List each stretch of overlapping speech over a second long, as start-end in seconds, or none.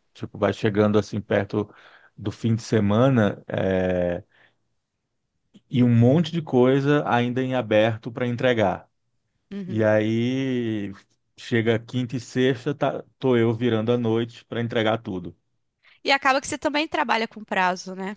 none